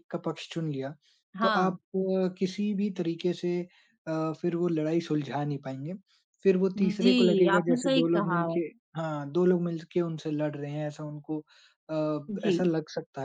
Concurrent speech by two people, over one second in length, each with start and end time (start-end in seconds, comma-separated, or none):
6.8-8.6